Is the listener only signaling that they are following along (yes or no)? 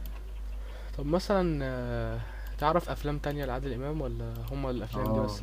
no